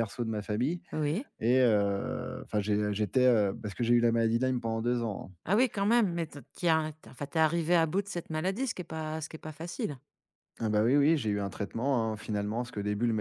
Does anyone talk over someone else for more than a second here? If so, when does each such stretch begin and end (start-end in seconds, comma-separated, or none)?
none